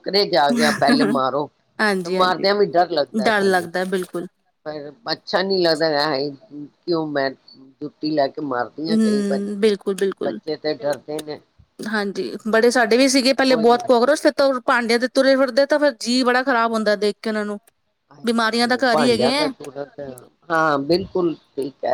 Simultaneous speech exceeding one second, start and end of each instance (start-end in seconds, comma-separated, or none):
none